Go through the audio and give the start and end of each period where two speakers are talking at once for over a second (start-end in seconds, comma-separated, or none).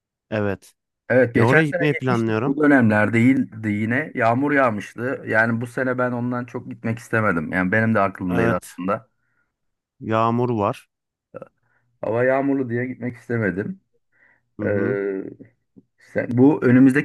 1.3-2.6